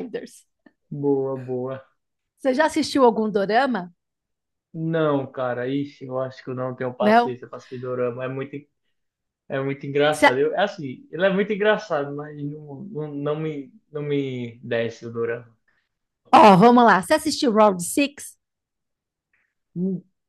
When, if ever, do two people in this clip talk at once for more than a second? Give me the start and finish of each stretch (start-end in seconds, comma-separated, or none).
none